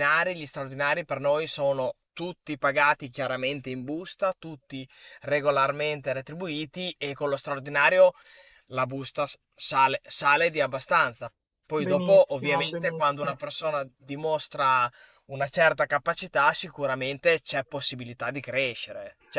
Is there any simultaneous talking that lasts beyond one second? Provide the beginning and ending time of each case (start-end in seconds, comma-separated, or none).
11.8-13.4